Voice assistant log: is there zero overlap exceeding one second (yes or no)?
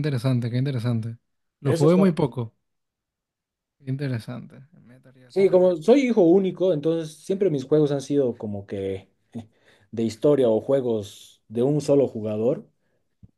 yes